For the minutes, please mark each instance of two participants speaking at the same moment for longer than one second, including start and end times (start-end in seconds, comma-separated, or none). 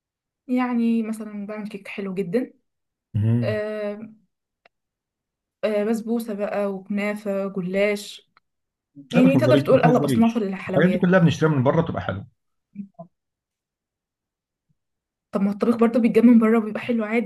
9.1-11.1